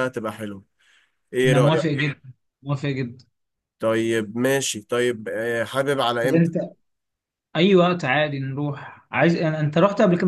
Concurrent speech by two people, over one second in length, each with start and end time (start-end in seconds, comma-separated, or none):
none